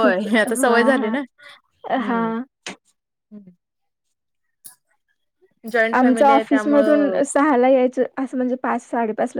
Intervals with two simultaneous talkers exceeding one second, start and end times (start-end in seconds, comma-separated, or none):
6.0-7.2